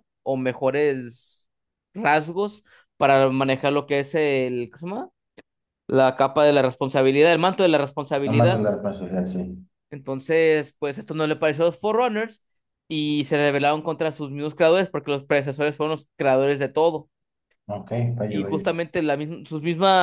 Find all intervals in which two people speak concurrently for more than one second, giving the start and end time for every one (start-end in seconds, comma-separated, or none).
none